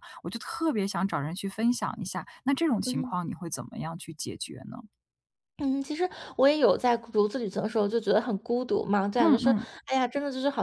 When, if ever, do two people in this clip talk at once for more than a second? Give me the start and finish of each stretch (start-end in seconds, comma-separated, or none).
none